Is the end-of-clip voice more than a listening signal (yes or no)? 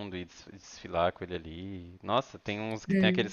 no